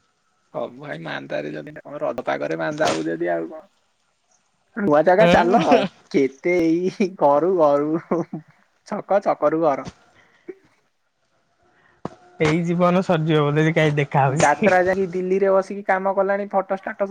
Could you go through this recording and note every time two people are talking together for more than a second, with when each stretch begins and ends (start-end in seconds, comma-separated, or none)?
none